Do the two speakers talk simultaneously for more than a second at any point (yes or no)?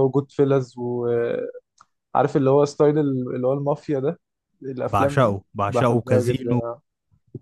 yes